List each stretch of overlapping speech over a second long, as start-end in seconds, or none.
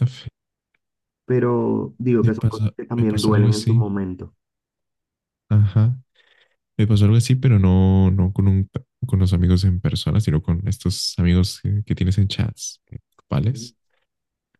2.2-3.8